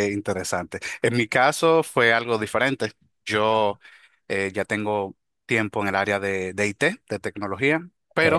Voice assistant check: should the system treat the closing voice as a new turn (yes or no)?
no